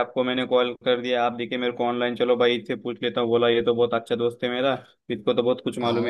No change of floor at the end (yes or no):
yes